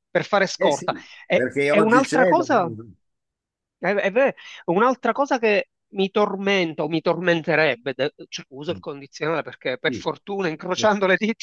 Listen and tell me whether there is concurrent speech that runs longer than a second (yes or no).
yes